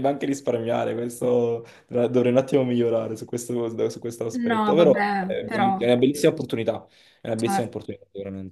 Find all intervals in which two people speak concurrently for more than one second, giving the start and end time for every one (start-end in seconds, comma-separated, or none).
4.5-5.7